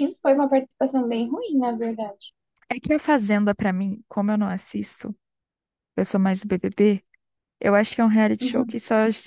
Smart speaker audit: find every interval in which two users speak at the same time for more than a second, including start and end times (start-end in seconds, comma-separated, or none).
none